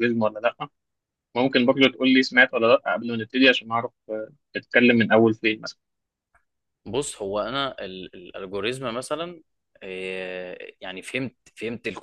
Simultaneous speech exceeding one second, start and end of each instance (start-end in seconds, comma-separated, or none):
none